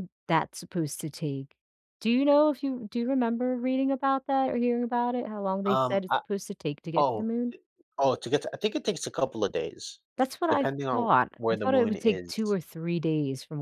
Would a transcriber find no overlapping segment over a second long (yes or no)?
no